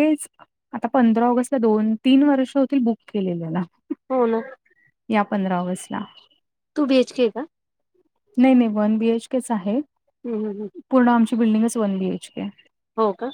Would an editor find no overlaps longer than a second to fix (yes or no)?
yes